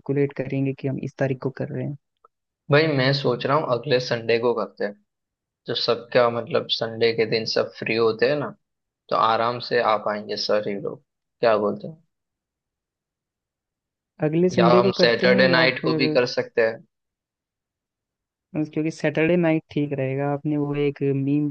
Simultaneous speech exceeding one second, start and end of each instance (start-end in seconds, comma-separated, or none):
14.6-16.2